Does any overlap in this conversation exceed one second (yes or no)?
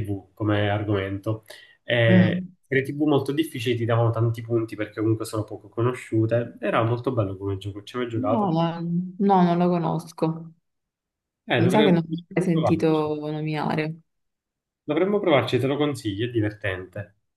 yes